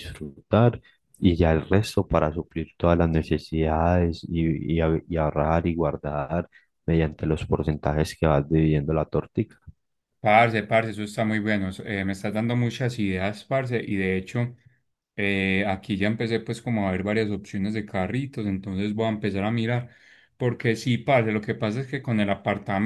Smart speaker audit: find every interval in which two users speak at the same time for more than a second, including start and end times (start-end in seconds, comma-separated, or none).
none